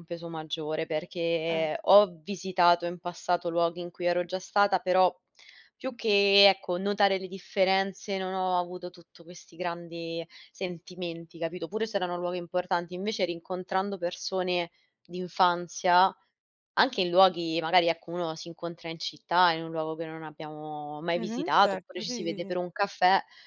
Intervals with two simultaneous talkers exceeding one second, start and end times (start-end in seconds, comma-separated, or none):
21.1-22.5